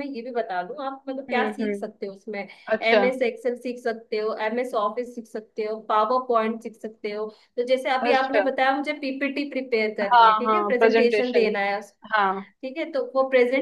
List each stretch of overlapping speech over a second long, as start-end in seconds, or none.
10.1-11.5